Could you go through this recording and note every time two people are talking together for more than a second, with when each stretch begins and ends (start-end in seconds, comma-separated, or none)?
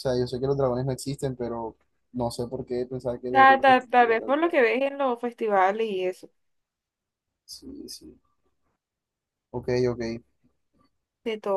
3.3-4.6